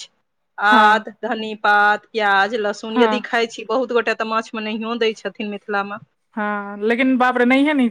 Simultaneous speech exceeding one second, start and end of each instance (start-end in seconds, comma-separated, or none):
none